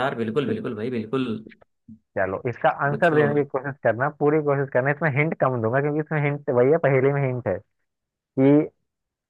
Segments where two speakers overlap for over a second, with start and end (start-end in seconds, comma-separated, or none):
none